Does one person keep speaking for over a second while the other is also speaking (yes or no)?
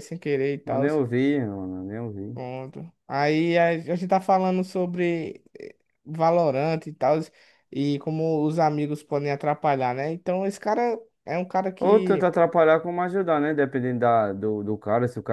no